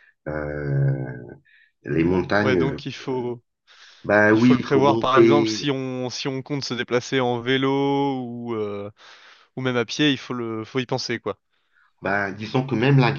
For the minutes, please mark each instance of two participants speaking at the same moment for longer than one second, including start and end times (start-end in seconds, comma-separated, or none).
4.3-5.7